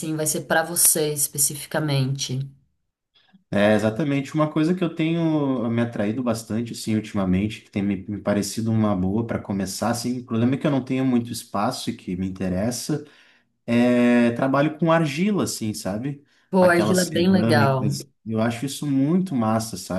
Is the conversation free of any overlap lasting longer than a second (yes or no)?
no